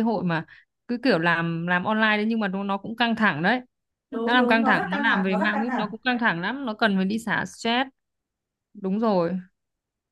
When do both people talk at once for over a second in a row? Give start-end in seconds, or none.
4.2-5.9